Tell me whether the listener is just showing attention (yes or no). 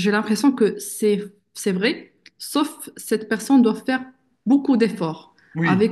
yes